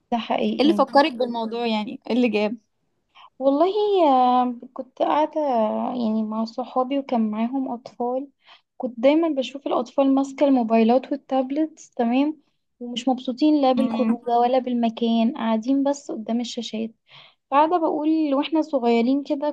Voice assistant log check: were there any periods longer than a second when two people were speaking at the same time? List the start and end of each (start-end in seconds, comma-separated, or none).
none